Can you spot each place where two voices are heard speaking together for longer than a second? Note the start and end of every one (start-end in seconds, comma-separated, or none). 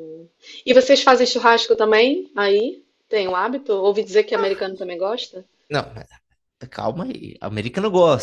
none